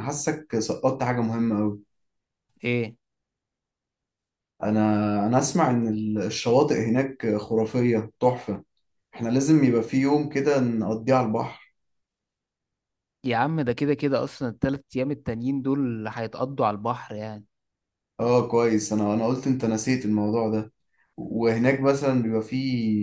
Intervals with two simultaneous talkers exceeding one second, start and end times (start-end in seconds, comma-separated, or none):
none